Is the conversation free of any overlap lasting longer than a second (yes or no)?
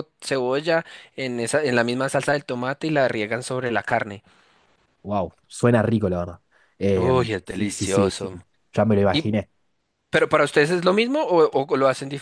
no